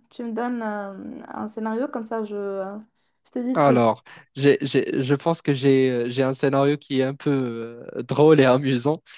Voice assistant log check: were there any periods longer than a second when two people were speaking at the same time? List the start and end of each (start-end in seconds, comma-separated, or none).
none